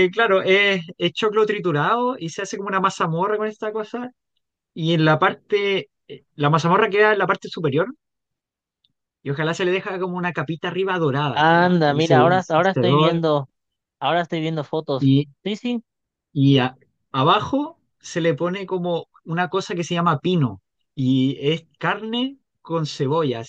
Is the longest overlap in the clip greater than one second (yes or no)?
yes